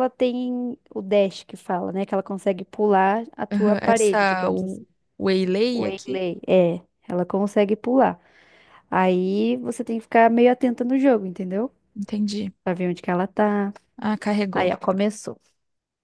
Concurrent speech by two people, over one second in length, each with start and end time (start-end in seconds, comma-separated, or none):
3.5-4.8